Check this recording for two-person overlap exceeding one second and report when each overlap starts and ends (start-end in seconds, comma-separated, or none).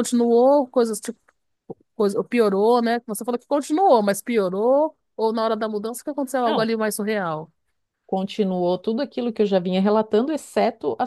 none